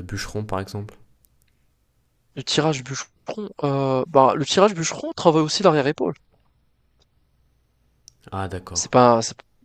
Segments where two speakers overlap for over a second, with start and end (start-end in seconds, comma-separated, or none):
none